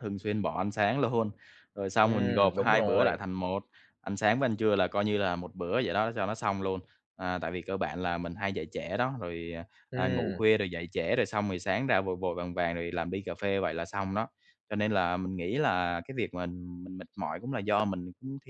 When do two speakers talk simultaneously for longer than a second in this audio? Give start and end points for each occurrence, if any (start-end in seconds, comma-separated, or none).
2.0-3.2